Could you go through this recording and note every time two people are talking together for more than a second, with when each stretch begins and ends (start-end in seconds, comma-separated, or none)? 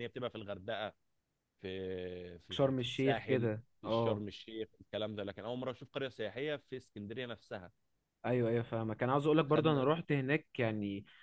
2.5-4.2